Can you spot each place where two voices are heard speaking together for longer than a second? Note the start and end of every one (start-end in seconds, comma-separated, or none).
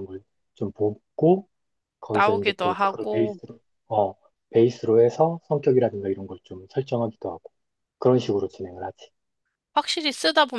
2.1-3.4